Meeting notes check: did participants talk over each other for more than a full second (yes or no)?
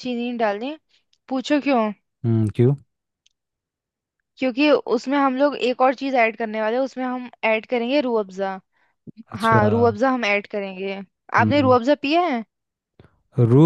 no